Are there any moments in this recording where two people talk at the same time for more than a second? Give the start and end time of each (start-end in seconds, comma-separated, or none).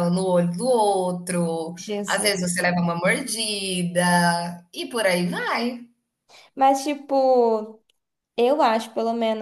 none